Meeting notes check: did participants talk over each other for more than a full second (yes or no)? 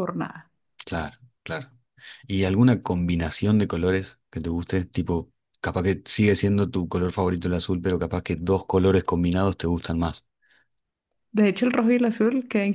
no